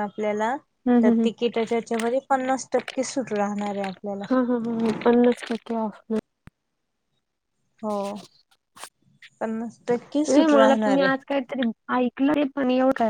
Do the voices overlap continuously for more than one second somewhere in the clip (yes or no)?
no